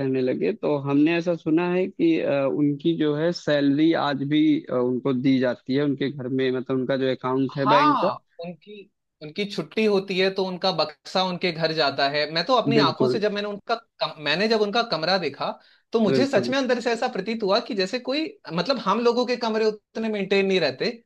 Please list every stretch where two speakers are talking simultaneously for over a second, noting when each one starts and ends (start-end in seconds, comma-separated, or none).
none